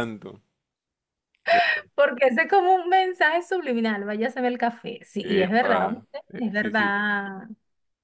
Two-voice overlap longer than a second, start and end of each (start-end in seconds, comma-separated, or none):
5.2-7.0